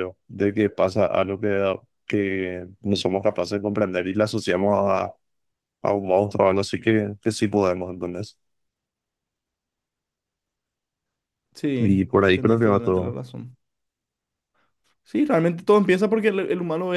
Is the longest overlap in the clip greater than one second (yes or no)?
yes